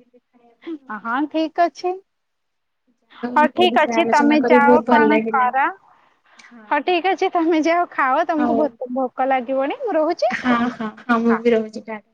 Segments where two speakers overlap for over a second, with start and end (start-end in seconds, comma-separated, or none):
3.4-5.5